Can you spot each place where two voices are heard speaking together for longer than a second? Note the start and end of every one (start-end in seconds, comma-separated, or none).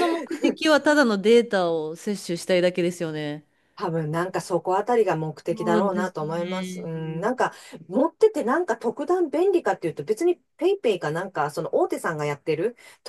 5.5-6.9